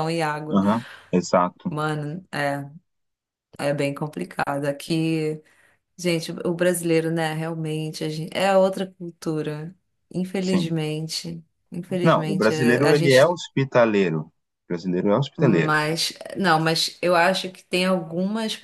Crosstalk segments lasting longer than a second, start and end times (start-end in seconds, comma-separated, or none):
12.0-13.3